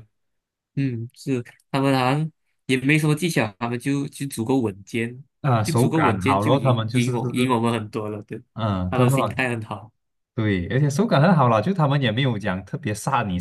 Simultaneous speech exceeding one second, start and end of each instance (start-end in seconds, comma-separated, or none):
5.6-7.5